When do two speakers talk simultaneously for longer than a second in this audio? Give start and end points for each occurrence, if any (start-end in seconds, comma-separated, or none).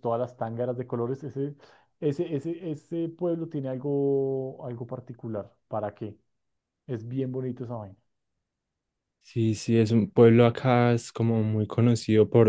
none